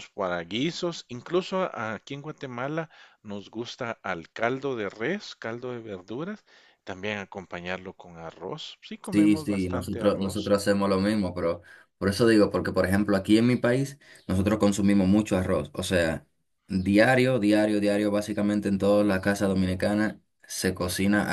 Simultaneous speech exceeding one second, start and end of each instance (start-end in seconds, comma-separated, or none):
9.1-10.6